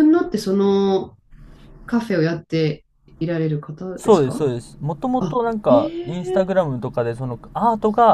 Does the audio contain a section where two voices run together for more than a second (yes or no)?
no